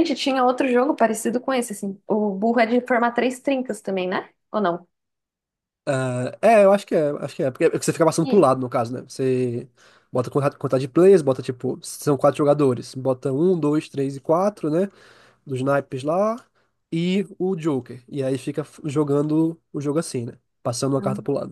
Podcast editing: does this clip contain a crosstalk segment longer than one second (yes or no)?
no